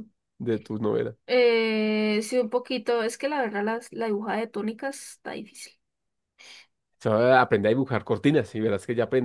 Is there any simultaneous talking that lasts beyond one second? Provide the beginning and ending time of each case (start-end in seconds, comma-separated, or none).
none